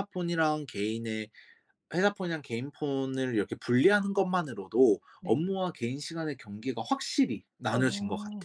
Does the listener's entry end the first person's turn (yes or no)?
yes